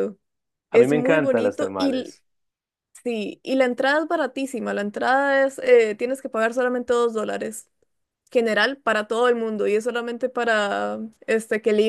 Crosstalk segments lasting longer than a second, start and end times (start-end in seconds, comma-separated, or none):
0.7-2.1